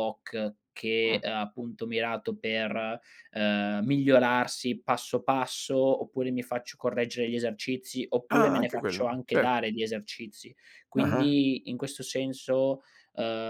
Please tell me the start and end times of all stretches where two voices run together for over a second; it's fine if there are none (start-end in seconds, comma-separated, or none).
8.3-9.5